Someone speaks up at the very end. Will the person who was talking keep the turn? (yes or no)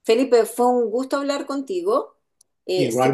yes